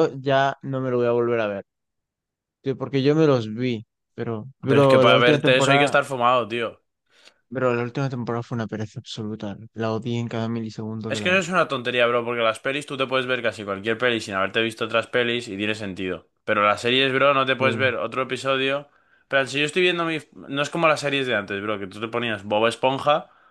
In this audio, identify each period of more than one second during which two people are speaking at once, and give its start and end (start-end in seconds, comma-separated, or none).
4.7-6.0